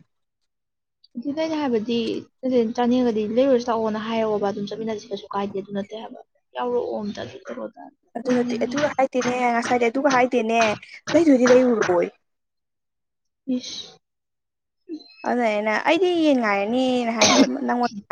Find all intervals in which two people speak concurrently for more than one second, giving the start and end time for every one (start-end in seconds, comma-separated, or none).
none